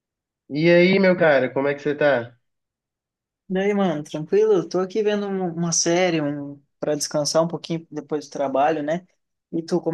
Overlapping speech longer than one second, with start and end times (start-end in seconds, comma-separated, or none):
none